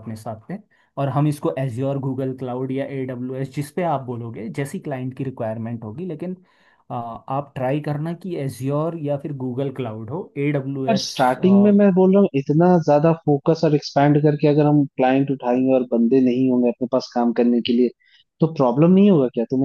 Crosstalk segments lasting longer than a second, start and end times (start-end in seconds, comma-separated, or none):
none